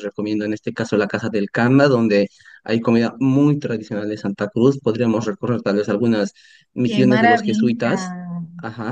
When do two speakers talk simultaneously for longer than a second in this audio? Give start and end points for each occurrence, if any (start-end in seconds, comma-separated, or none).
6.8-8.1